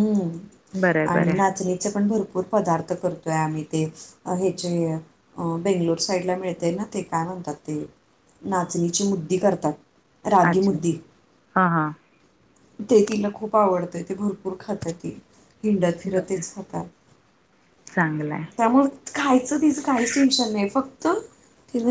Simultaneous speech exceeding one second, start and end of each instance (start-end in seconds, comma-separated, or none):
none